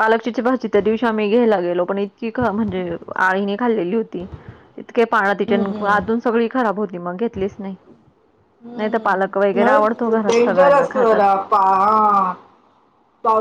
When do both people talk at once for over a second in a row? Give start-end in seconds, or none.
8.8-11.2